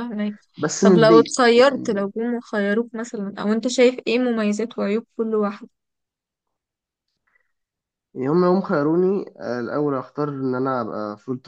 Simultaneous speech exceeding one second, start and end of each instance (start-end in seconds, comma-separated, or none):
0.8-2.1